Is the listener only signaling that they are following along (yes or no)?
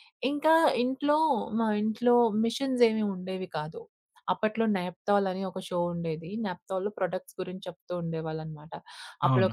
yes